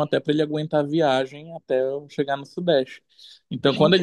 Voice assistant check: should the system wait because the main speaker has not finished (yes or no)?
yes